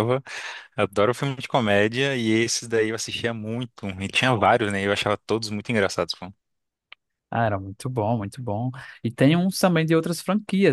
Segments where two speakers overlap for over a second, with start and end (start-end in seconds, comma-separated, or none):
none